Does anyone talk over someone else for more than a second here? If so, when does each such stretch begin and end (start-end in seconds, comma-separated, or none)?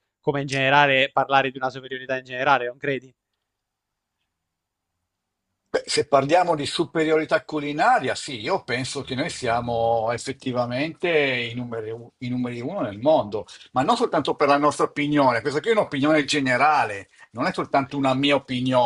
none